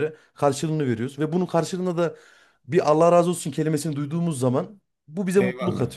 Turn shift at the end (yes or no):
yes